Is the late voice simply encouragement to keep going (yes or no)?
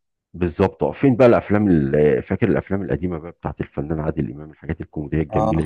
no